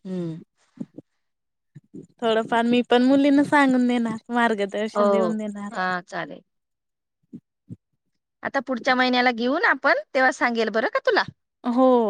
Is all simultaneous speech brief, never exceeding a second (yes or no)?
yes